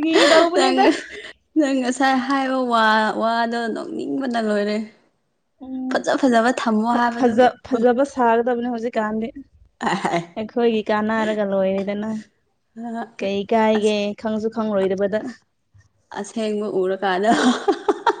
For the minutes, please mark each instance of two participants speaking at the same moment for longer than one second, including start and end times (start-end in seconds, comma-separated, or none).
5.9-7.3